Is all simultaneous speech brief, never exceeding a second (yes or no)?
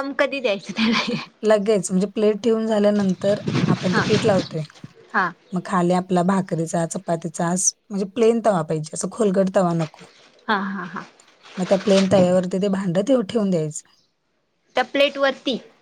yes